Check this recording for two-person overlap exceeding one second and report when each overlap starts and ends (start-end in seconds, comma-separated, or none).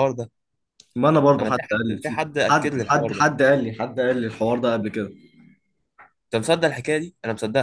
1.4-3.2